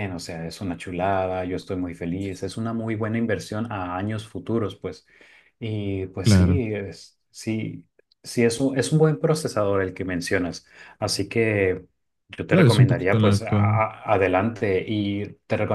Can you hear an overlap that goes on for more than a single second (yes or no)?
yes